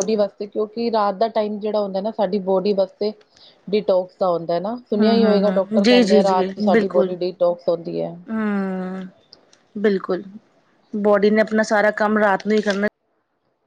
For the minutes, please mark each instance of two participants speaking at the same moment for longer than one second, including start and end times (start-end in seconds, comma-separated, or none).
5.0-7.1